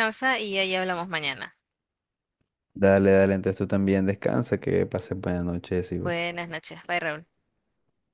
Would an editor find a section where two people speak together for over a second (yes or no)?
no